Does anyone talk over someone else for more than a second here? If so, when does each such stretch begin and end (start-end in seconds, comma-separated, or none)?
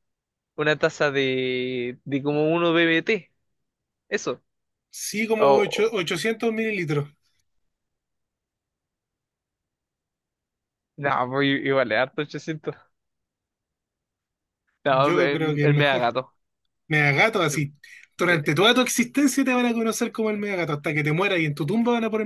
14.9-16.1